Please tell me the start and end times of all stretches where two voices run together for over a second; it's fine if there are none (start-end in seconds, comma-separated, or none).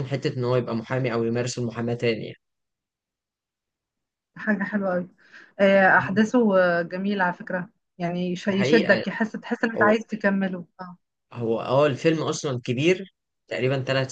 none